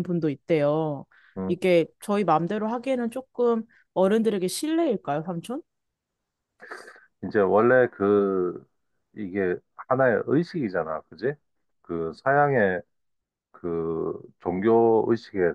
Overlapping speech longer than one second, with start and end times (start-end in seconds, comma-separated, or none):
none